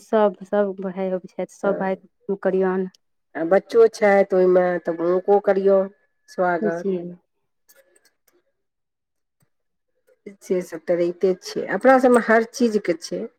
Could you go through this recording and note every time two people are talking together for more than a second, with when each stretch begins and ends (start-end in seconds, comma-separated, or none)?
none